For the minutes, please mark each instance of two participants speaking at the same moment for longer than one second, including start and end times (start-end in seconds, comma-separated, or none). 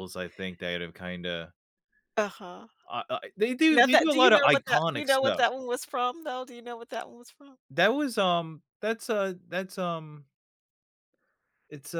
3.7-5.5